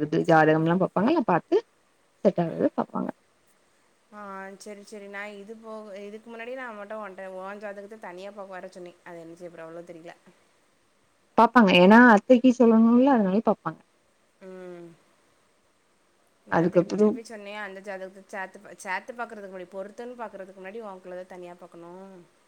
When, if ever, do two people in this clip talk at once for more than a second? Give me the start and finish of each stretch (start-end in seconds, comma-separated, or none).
none